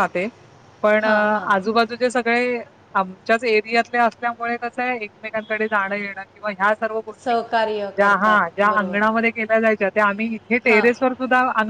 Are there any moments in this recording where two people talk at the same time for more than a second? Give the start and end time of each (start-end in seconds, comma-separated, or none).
7.2-9.0